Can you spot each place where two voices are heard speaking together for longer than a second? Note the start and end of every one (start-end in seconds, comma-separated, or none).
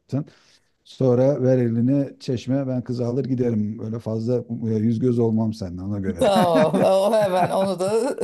none